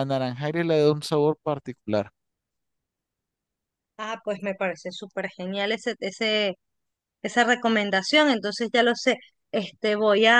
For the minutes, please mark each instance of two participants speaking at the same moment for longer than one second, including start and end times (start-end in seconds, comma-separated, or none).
none